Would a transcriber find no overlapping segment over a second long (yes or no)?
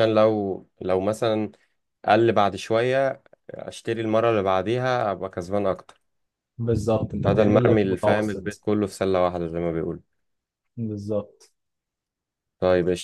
no